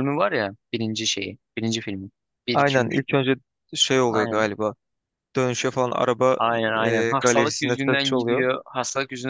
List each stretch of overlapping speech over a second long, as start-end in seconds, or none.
6.8-8.5